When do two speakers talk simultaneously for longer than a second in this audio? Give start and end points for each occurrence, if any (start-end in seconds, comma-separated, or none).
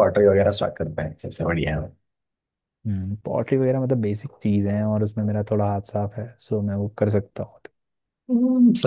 none